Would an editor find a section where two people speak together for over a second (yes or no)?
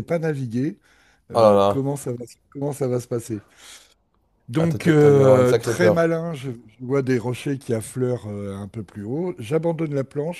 yes